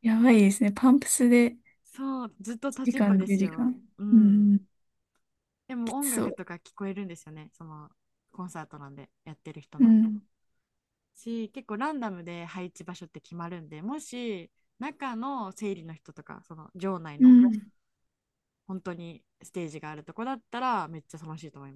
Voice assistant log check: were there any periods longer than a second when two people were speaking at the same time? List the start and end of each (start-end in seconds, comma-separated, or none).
1.8-4.6